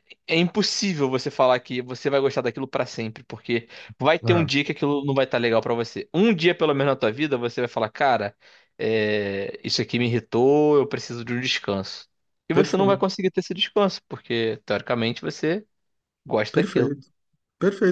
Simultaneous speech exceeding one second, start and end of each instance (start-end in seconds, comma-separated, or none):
none